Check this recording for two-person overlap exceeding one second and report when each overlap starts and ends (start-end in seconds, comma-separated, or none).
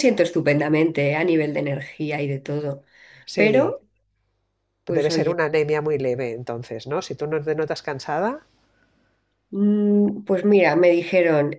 none